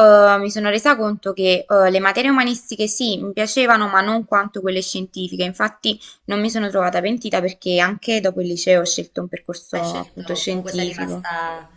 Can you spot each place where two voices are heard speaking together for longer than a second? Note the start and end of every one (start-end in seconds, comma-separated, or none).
9.7-11.3